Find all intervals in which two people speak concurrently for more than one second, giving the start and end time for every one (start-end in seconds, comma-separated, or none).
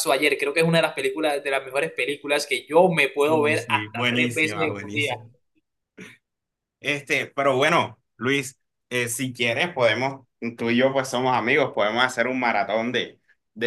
3.3-5.2